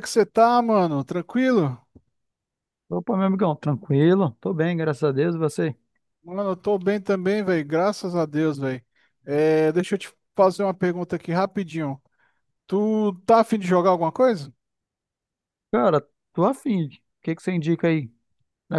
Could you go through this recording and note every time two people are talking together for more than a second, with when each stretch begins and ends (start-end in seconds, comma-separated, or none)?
none